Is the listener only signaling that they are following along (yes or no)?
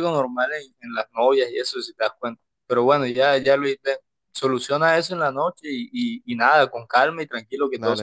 no